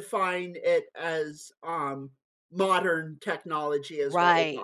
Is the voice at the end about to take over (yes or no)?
yes